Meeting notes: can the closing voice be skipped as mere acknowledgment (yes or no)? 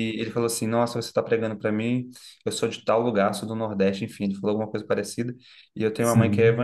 yes